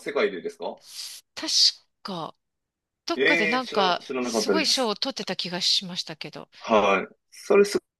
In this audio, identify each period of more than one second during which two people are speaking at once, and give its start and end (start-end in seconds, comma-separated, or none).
3.1-4.9